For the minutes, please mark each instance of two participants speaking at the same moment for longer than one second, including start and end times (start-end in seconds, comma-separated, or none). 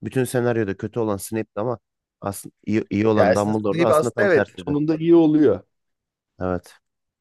3.1-4.8